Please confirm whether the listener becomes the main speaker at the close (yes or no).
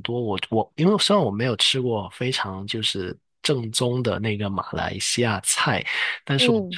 no